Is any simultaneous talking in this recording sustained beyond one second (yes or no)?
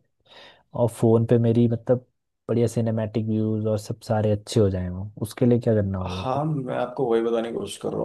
no